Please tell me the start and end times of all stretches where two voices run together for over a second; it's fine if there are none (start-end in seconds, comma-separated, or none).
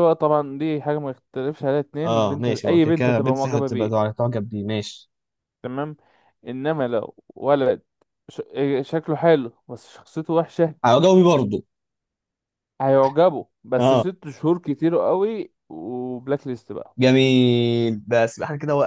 2.0-4.1